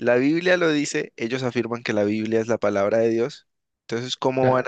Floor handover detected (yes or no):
no